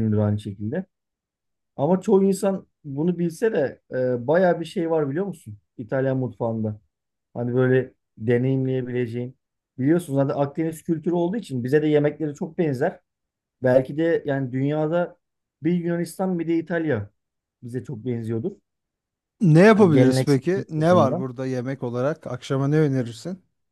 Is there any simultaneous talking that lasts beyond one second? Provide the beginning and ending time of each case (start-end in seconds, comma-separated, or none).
19.7-21.2